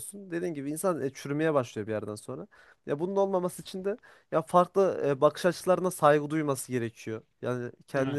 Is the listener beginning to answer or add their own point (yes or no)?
no